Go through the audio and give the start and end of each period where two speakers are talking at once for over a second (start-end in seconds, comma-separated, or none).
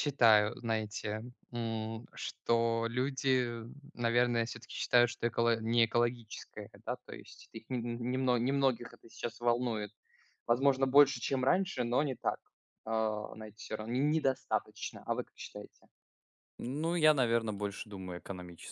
none